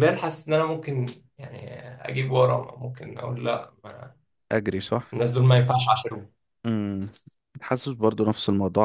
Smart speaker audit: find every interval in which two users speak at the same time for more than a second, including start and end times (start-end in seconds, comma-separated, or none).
none